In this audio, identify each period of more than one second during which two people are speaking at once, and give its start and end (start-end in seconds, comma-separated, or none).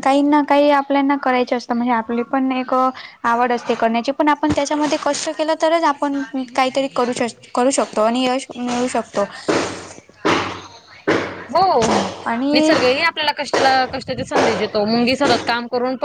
none